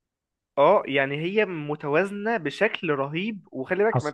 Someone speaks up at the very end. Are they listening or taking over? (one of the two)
taking over